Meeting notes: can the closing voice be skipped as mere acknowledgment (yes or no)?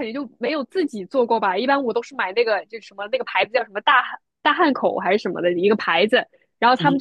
yes